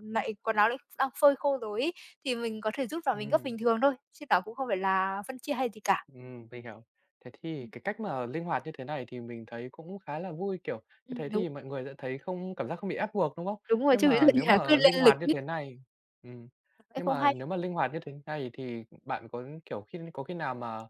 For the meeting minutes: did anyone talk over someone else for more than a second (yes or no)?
yes